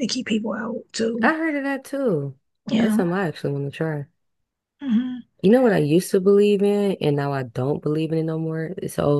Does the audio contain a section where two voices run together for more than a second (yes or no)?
no